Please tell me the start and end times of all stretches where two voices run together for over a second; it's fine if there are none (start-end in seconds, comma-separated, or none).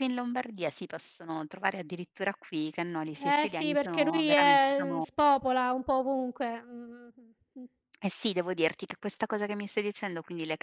3.4-5.0